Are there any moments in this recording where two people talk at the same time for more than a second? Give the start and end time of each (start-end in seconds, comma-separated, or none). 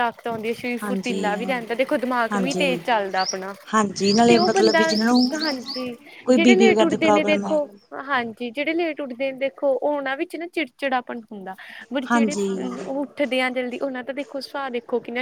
6.3-7.6